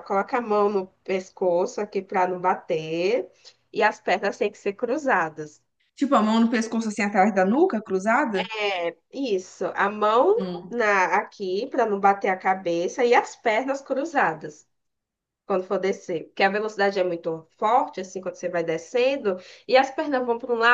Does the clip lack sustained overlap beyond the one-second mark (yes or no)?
yes